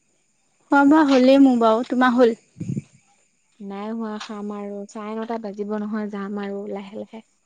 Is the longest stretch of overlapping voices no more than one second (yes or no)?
yes